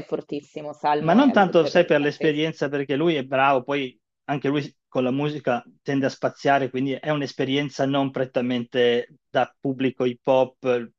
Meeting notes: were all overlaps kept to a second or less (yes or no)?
no